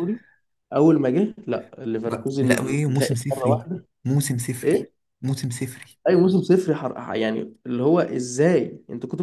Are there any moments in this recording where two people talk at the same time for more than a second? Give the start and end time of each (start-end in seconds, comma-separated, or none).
2.0-3.9